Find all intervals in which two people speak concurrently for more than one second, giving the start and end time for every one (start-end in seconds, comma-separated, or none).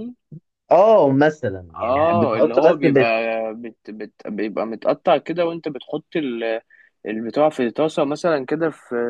1.8-3.0